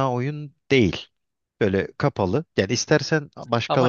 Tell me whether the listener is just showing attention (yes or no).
yes